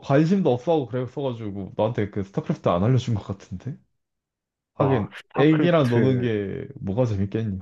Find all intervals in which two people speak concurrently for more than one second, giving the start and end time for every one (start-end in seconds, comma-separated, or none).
4.8-6.3